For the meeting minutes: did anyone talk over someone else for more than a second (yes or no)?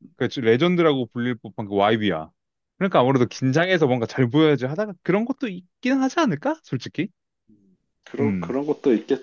no